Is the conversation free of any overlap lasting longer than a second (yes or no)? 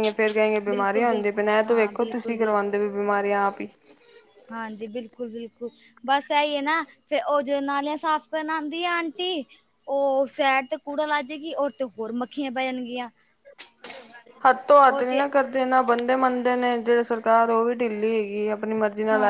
no